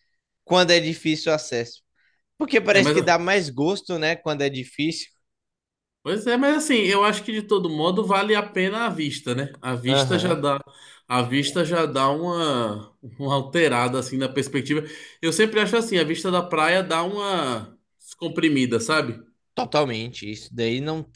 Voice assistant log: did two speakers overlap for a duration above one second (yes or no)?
no